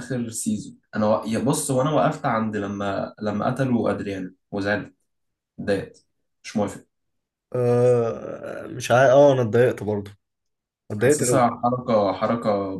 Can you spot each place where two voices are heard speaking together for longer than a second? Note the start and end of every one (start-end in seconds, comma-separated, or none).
none